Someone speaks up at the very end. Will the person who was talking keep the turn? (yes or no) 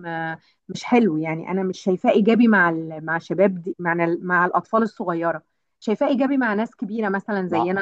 yes